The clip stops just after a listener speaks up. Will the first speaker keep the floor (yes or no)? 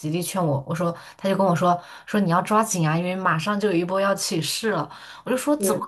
yes